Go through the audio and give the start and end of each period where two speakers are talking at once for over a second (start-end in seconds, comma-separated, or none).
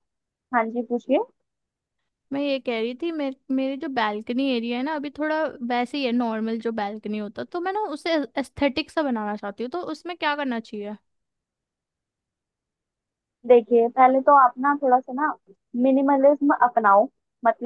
none